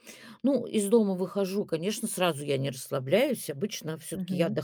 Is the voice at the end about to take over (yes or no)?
no